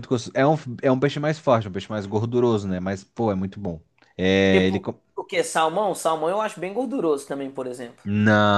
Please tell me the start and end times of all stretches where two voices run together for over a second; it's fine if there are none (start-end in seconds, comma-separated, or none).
none